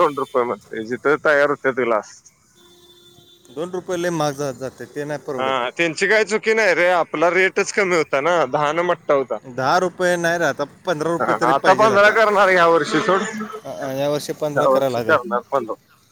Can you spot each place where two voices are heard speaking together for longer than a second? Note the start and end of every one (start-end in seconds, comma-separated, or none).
13.7-15.2